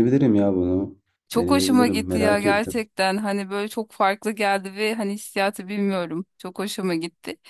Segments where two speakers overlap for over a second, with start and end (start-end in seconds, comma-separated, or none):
1.4-2.7